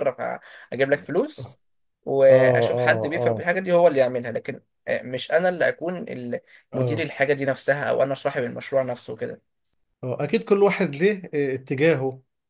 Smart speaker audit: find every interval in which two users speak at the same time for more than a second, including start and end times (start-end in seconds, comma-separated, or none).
2.3-3.5